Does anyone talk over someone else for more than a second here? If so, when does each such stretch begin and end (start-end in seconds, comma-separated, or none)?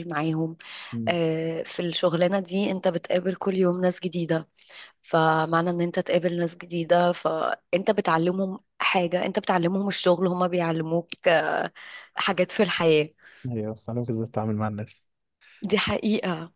none